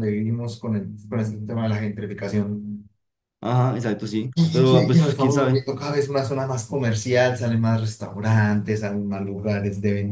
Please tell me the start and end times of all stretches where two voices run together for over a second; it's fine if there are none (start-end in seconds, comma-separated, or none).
4.3-5.6